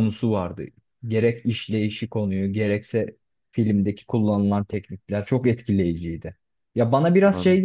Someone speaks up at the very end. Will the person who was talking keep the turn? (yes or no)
yes